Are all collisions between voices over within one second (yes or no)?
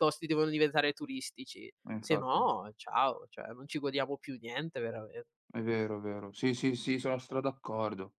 yes